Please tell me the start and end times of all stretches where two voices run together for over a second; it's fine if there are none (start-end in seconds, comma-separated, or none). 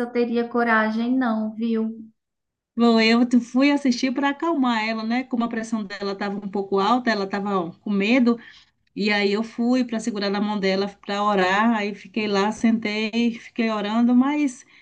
none